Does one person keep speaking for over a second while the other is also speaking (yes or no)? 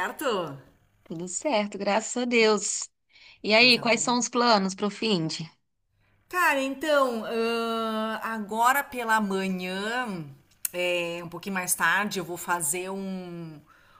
no